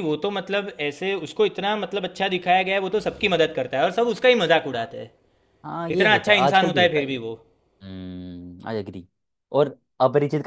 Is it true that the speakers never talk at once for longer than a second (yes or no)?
no